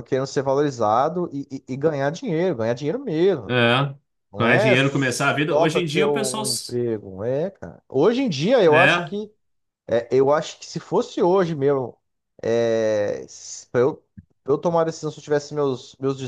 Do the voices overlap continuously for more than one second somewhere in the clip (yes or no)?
yes